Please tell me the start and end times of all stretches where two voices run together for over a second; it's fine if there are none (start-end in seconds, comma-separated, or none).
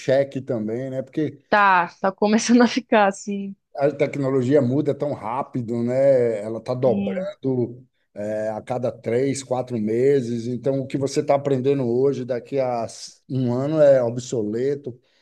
none